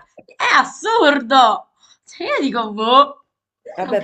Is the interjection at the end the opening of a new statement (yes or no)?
yes